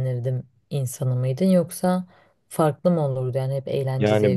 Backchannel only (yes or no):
no